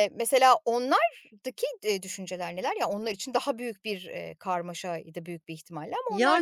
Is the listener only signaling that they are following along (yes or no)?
no